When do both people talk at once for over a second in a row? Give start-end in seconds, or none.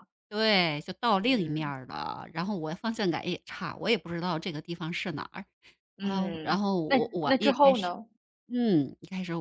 6.0-8.0